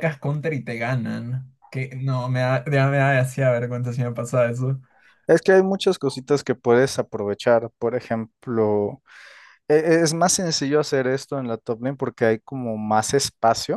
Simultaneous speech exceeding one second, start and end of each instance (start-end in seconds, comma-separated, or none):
none